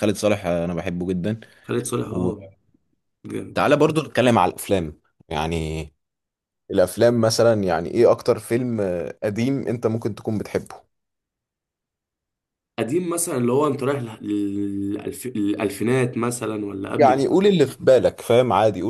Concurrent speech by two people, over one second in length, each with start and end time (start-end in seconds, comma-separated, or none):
none